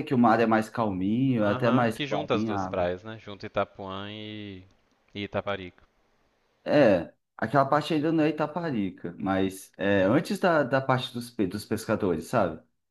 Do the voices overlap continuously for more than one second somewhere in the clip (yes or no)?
yes